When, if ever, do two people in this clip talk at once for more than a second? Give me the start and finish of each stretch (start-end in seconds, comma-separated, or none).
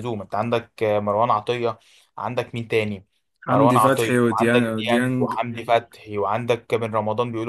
3.5-5.3